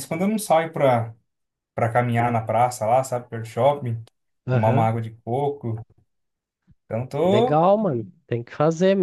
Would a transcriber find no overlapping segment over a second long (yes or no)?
yes